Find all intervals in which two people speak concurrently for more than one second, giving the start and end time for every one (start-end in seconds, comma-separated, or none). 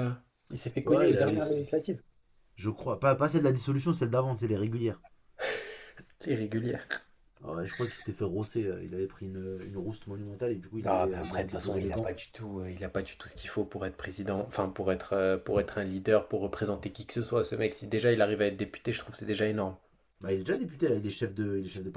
10.8-12.1